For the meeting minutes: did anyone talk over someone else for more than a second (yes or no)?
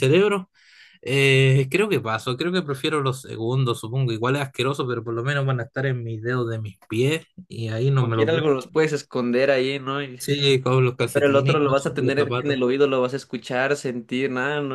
yes